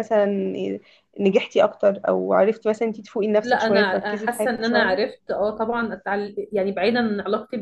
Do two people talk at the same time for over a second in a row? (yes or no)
yes